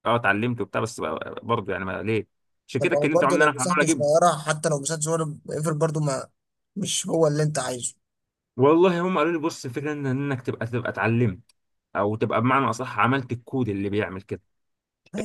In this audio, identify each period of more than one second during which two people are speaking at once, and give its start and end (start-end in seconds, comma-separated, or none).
2.8-4.1